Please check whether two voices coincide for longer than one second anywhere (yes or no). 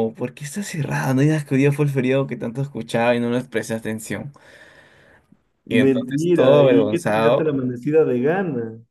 yes